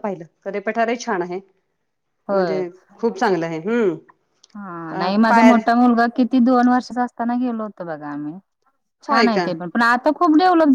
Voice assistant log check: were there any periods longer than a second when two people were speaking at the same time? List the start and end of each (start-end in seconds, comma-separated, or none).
none